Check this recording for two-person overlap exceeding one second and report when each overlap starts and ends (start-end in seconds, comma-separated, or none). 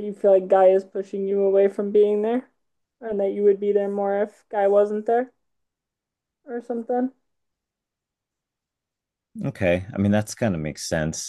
none